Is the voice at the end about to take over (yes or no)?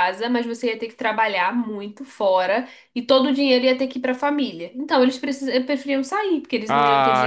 yes